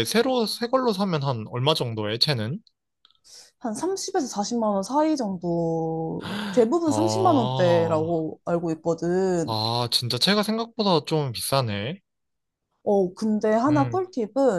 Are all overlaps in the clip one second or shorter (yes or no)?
no